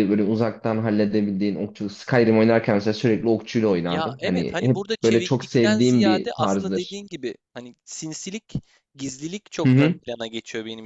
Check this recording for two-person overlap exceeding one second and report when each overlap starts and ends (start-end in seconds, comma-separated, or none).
3.8-7.0